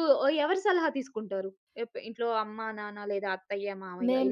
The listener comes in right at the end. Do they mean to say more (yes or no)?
yes